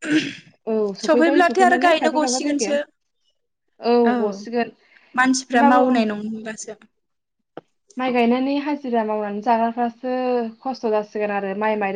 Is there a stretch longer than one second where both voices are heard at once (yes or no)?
yes